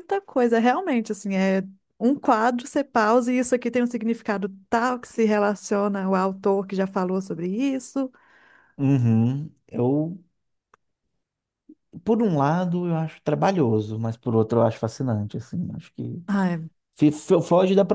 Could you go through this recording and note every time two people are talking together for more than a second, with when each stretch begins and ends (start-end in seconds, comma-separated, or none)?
none